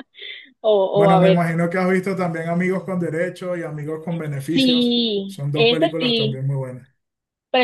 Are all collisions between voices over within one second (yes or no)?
no